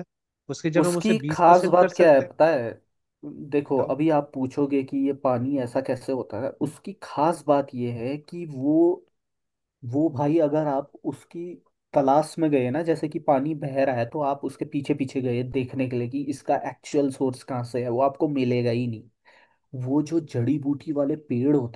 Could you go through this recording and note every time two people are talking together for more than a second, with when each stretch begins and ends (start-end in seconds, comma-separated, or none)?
0.8-2.3